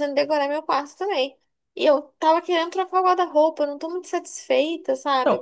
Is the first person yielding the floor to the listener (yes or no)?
yes